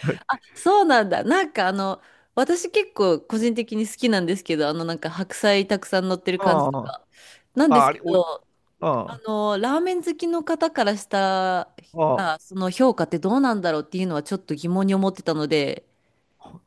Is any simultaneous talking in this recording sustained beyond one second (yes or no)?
no